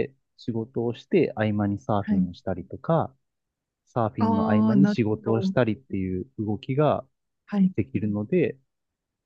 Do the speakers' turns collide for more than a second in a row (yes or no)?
yes